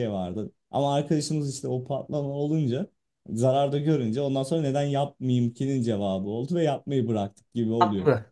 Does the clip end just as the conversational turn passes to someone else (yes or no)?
yes